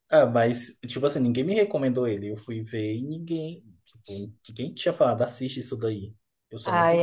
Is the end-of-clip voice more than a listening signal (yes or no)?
yes